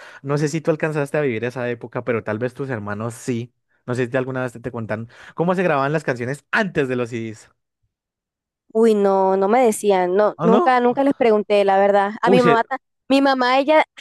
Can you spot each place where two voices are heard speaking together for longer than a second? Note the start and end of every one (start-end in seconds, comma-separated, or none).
none